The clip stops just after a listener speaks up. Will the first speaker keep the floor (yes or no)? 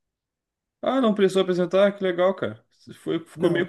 yes